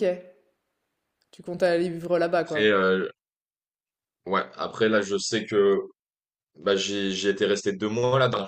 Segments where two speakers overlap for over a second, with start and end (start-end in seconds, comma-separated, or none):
none